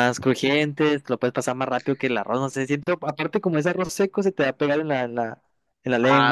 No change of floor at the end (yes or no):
no